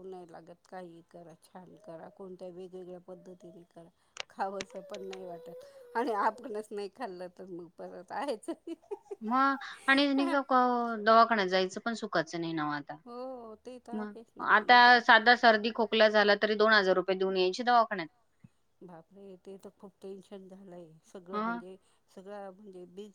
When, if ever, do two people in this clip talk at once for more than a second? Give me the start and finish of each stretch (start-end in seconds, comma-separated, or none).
none